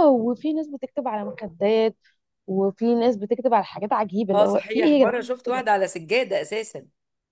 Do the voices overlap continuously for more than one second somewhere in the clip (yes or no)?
yes